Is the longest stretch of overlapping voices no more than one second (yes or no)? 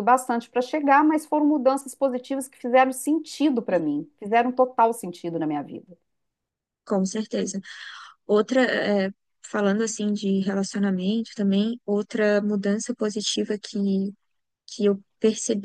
yes